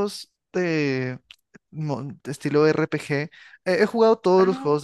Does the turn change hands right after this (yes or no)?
no